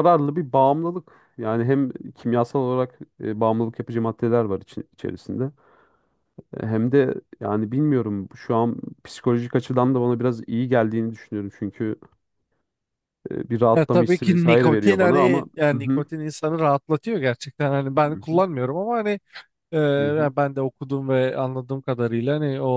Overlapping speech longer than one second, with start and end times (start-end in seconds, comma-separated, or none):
13.8-16.0